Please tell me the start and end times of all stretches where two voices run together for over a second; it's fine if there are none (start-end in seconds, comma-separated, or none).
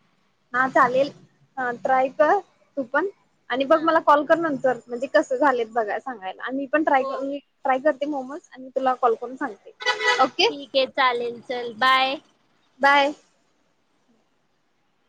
none